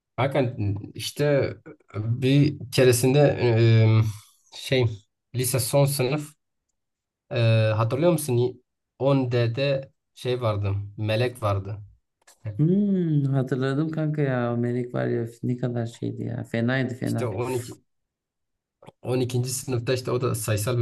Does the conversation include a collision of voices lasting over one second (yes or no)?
no